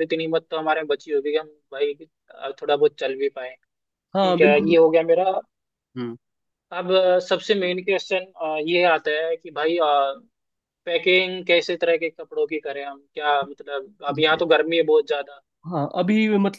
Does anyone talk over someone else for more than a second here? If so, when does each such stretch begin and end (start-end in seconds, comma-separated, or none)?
none